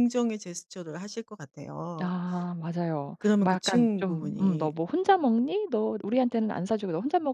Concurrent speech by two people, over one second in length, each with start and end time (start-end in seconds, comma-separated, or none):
3.2-4.7